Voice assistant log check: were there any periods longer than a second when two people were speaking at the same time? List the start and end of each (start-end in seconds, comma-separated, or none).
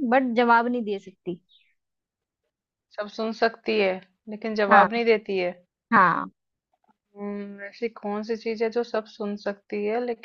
none